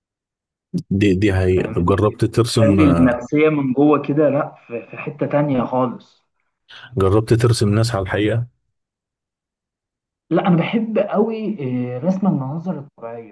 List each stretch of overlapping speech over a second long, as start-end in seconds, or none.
1.6-3.2